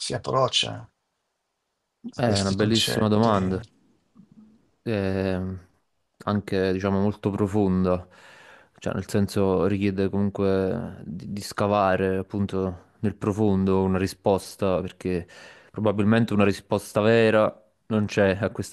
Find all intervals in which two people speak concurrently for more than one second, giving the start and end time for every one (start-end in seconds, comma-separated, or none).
2.2-3.6